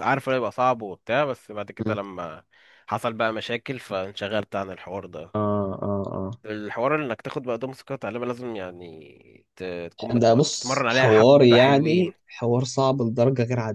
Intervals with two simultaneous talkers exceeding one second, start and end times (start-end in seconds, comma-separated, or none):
10.1-12.1